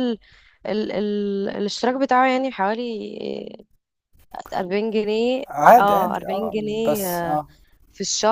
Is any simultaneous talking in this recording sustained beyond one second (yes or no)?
yes